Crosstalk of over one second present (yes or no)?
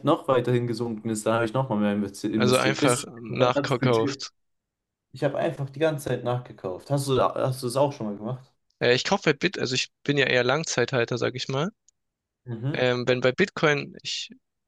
yes